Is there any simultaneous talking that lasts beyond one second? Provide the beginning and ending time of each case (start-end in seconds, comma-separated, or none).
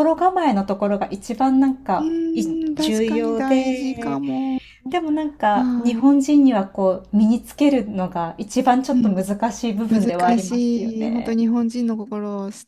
2.7-4.2, 9.9-11.4